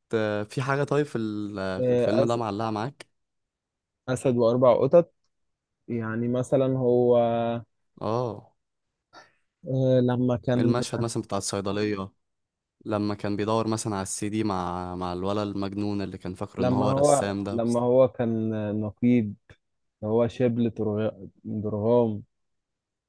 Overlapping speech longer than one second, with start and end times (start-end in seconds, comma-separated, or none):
16.6-17.8